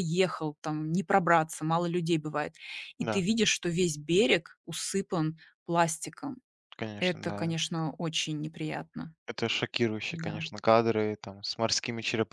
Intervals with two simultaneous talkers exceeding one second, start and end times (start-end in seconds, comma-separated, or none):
none